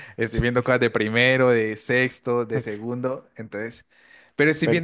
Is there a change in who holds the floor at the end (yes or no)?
no